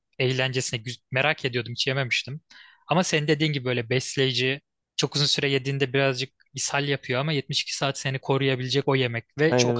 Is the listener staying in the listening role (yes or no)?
yes